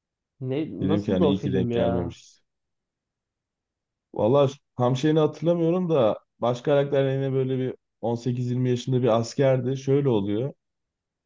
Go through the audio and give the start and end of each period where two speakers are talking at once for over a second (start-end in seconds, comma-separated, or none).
0.8-2.1